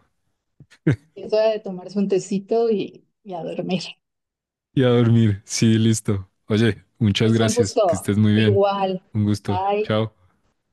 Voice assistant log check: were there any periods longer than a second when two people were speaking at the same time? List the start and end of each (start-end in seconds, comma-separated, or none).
7.2-8.6